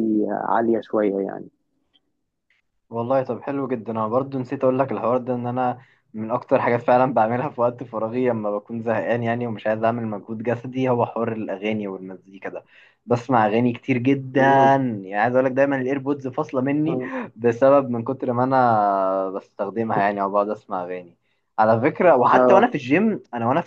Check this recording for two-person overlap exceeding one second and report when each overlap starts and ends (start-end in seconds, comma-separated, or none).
none